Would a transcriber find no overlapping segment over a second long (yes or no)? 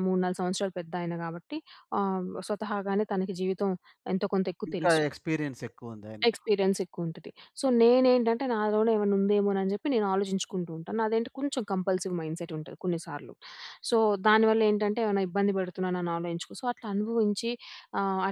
yes